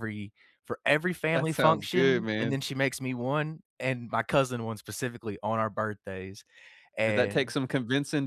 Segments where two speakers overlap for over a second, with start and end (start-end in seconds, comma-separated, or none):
1.3-2.6